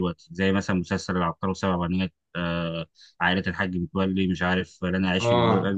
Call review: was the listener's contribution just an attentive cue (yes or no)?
no